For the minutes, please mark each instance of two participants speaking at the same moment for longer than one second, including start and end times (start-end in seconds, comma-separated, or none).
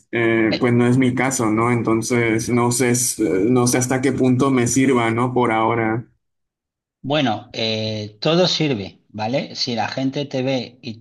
none